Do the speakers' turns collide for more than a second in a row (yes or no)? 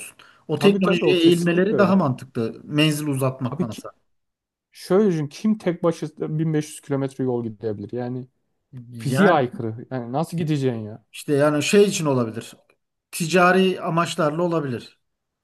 yes